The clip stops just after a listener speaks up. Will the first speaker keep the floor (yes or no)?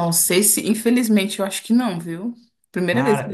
no